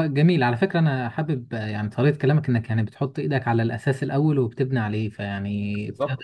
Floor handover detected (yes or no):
no